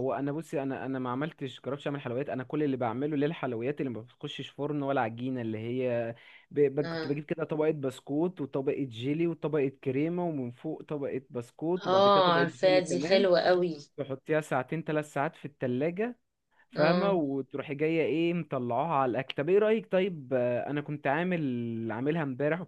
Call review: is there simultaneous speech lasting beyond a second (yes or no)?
yes